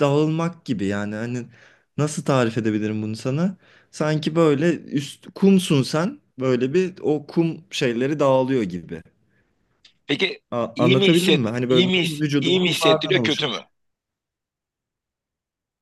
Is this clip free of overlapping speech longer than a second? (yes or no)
no